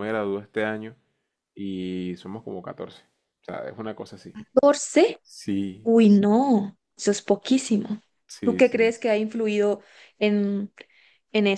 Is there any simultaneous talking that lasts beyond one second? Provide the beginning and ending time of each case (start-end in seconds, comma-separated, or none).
none